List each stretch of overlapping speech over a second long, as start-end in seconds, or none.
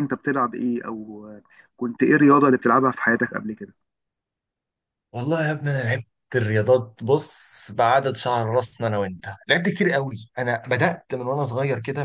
none